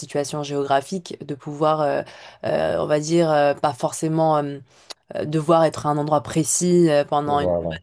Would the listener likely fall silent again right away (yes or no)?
yes